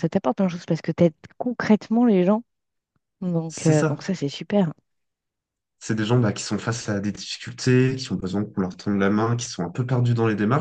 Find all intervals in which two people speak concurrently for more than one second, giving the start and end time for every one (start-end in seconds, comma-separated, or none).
none